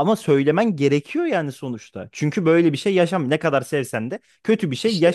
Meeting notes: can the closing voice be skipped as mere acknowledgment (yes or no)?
no